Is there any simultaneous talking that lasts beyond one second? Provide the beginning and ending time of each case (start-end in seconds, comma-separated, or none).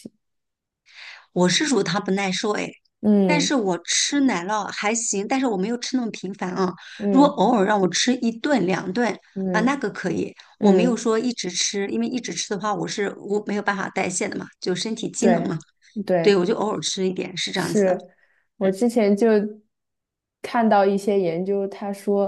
none